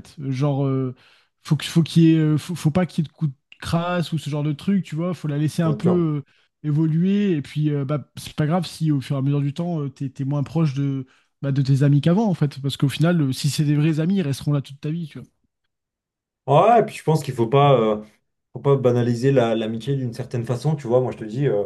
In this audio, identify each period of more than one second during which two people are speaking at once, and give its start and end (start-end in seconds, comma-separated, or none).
none